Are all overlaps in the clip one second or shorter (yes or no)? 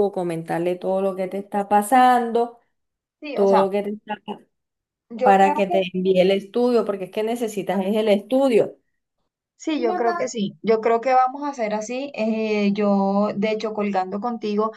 yes